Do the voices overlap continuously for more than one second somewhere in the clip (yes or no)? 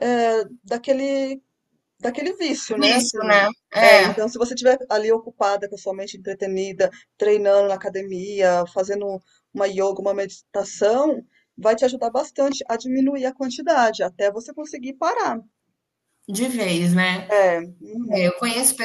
yes